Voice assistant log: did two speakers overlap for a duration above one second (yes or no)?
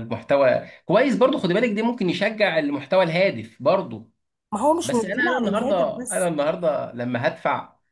yes